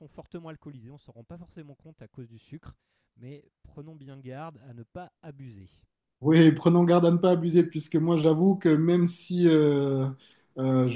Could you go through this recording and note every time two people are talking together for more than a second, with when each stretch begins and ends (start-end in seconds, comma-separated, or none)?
none